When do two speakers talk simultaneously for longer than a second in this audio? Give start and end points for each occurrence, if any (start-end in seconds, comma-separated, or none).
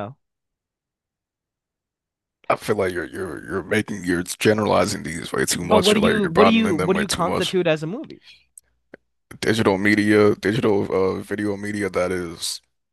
5.6-7.6